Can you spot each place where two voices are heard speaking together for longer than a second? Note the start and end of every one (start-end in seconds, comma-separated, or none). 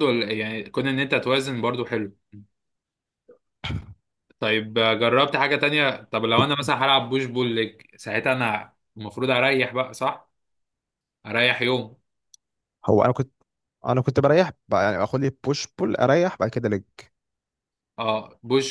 none